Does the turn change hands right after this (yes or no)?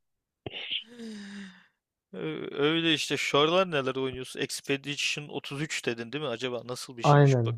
yes